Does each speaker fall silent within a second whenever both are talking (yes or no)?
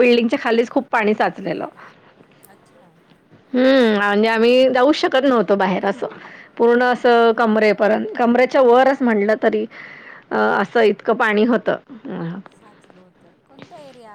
yes